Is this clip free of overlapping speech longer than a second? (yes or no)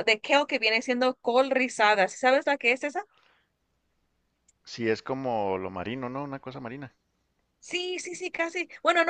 yes